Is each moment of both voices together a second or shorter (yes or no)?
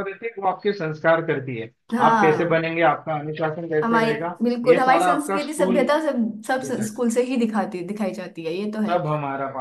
no